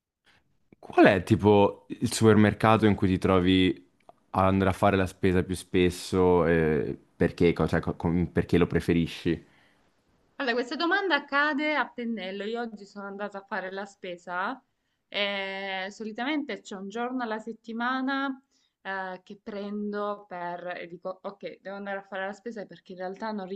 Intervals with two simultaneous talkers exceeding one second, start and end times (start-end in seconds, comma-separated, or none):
none